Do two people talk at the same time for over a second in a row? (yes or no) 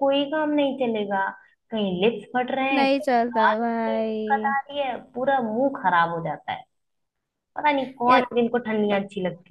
yes